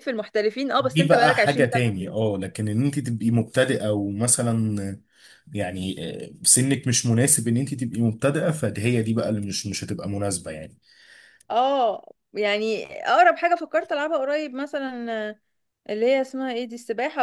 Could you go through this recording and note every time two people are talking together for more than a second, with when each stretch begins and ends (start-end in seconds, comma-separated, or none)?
0.8-2.1